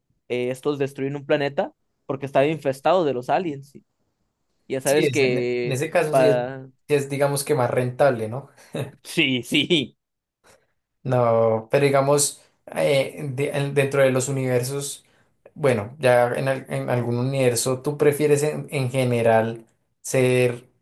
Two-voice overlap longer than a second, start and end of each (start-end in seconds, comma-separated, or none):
4.8-6.7